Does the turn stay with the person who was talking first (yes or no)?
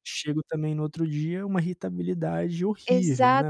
no